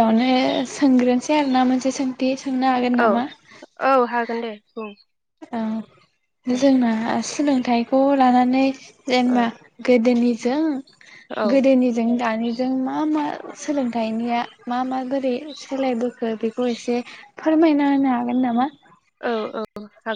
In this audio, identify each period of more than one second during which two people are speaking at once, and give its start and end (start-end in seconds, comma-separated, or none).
none